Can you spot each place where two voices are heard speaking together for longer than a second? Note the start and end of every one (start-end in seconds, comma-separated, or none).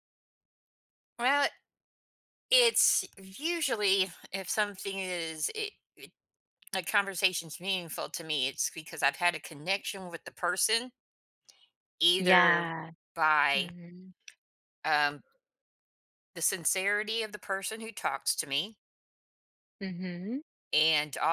none